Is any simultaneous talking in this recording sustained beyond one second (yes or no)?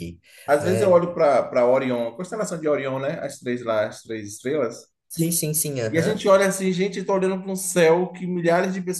no